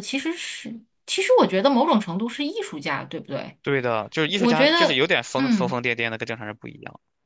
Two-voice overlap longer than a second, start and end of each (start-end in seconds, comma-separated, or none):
4.2-5.8